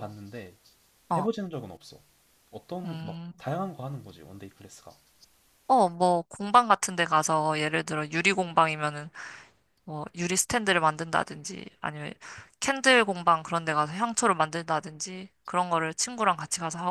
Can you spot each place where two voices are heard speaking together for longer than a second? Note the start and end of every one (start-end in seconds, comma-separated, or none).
none